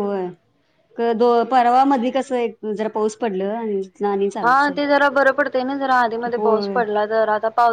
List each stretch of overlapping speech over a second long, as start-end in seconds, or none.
none